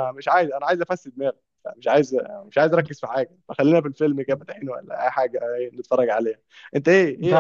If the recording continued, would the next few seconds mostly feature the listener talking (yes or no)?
no